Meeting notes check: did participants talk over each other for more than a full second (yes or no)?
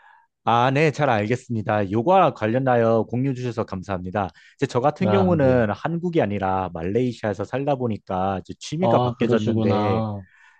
yes